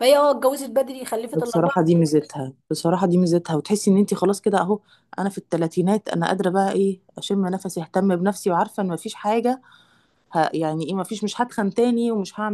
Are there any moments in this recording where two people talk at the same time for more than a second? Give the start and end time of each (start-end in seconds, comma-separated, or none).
none